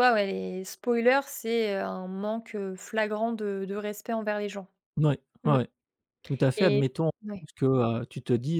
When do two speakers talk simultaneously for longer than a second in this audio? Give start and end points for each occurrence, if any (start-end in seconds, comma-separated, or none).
none